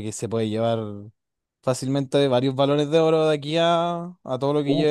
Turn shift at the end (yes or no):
yes